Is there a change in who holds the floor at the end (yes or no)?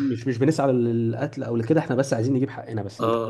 yes